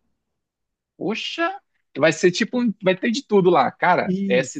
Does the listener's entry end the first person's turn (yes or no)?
no